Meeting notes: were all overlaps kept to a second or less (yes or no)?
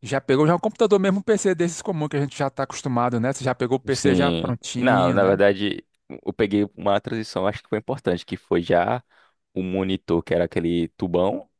no